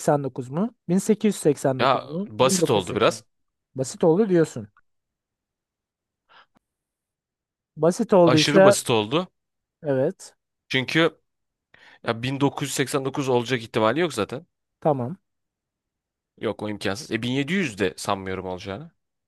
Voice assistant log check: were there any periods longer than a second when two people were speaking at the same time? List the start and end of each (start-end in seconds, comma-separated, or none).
1.8-3.2